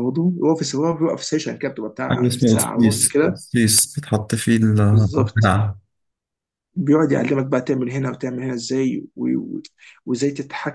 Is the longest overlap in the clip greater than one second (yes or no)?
yes